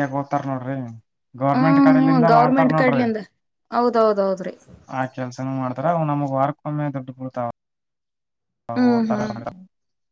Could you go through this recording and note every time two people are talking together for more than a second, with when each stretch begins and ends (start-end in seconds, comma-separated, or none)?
1.6-3.0